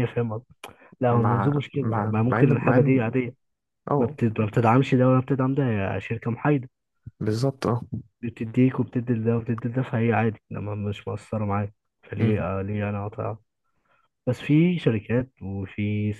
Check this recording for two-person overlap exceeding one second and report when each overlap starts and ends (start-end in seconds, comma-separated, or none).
1.1-3.0